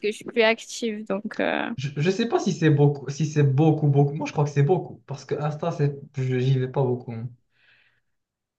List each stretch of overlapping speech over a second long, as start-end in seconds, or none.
none